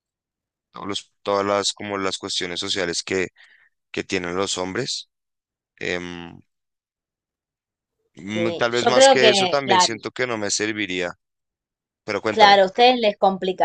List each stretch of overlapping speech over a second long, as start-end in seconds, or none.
8.3-9.9